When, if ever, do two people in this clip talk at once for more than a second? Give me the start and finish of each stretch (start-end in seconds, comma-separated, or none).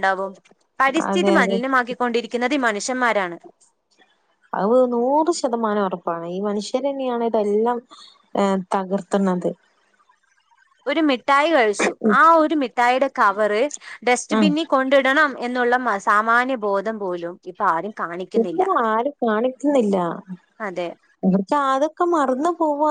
none